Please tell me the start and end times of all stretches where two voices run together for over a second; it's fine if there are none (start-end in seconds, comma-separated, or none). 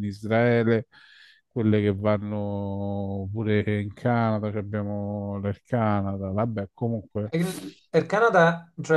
none